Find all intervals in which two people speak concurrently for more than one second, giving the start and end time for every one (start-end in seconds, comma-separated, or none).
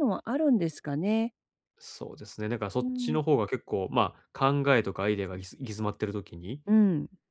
none